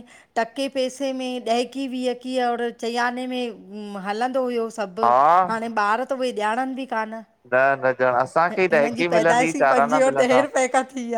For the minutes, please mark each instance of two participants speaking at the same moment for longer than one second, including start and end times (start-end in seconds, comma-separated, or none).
8.5-10.4